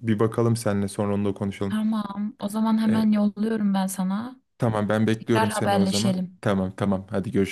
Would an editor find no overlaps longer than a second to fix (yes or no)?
no